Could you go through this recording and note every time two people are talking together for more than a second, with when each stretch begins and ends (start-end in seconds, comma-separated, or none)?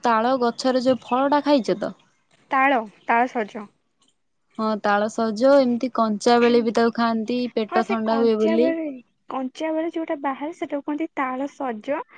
6.4-8.7